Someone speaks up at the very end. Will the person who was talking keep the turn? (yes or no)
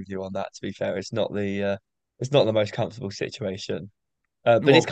yes